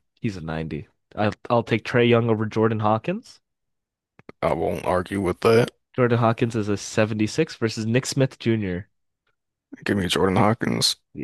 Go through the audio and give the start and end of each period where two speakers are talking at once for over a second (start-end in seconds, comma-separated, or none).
none